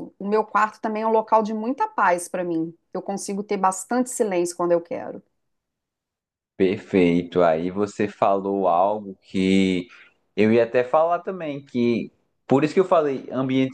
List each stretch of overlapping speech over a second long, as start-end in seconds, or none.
none